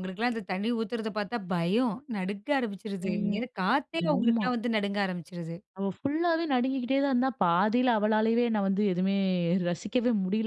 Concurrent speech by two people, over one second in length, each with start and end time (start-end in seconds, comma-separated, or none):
none